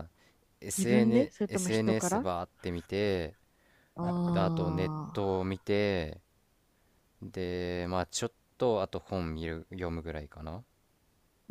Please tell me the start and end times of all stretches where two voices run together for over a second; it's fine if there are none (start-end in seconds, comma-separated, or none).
0.8-2.3